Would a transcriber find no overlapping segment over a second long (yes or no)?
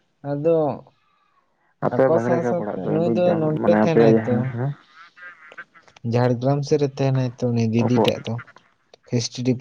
no